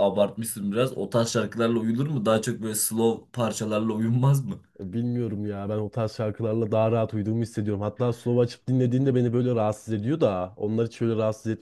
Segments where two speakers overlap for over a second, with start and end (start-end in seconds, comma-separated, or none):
none